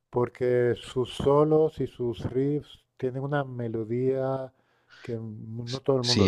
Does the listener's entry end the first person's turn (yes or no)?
yes